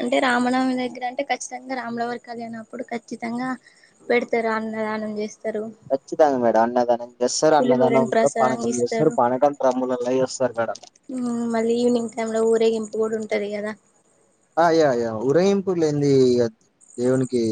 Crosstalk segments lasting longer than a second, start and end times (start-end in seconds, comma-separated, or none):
7.5-9.1